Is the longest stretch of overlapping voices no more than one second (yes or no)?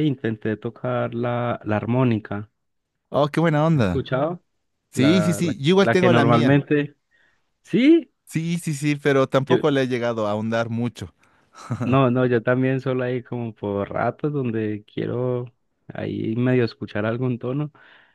no